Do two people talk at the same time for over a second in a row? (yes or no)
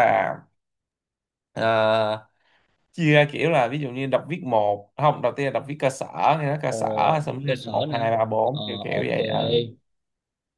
yes